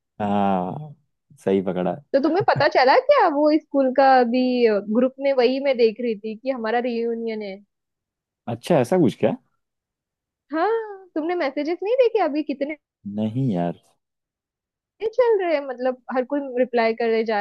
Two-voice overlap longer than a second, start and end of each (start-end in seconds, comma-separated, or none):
none